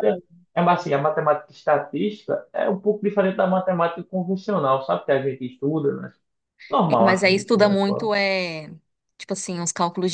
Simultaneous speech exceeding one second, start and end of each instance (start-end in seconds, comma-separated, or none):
6.9-8.1